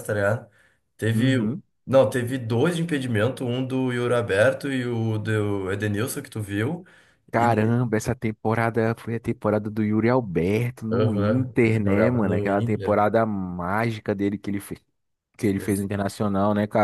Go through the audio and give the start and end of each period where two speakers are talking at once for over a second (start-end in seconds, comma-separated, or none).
10.9-13.0